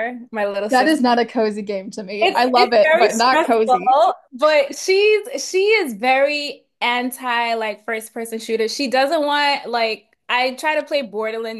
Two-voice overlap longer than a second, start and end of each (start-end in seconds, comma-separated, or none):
2.2-3.8